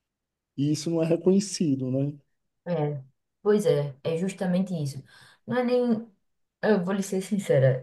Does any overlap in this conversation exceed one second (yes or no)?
no